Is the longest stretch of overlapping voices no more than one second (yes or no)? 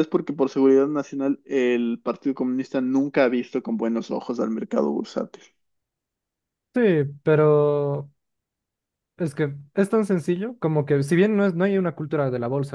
yes